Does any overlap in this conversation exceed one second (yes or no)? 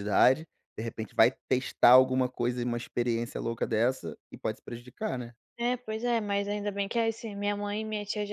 no